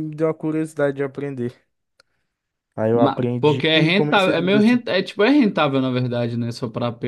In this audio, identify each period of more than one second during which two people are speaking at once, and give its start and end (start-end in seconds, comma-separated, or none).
2.9-4.8